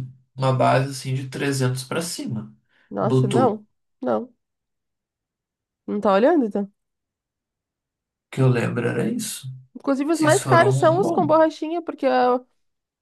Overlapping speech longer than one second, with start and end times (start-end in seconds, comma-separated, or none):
10.1-11.3